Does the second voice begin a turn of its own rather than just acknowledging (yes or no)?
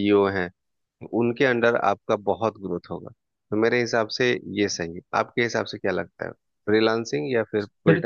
yes